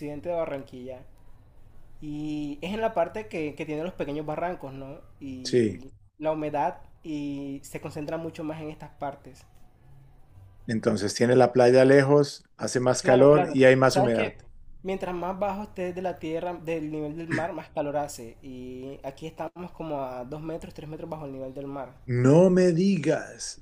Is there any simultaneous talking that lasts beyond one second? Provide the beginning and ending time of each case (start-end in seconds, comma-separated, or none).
13.0-14.4